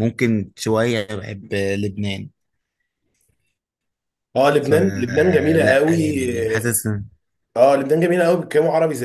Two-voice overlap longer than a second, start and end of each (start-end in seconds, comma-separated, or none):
4.6-6.0